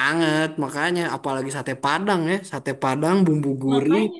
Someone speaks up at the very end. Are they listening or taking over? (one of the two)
listening